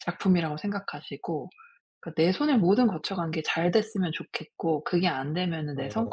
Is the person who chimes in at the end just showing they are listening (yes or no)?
yes